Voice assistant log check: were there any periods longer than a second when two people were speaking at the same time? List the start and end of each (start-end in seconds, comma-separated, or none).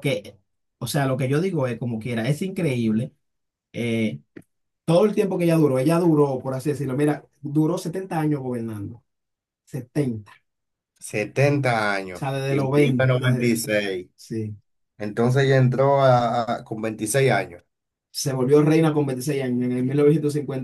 12.1-13.6